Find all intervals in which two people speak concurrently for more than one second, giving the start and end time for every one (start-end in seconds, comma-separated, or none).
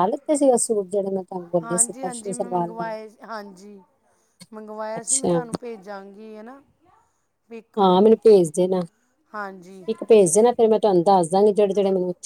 1.6-2.9